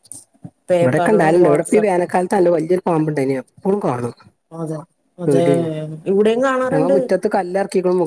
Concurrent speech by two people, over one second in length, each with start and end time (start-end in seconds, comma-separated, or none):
0.8-2.0